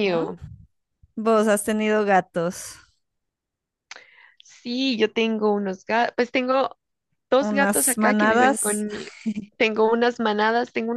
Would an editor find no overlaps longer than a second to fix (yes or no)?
no